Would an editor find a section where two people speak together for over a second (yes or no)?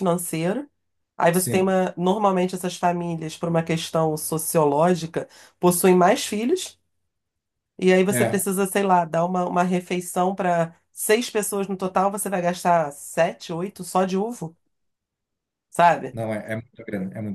no